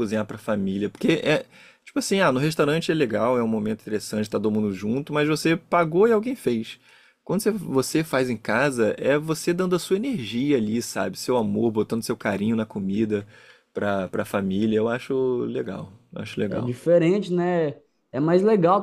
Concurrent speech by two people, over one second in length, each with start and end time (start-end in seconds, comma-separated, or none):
none